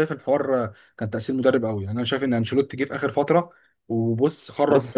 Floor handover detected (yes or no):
yes